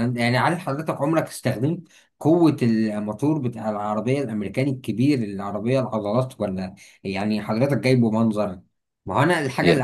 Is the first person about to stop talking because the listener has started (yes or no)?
no